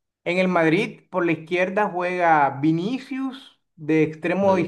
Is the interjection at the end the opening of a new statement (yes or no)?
no